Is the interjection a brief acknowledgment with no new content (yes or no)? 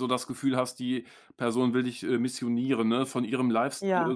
yes